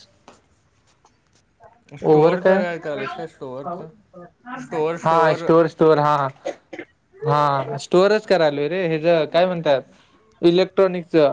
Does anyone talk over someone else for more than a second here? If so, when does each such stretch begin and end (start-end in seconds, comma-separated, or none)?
2.1-3.8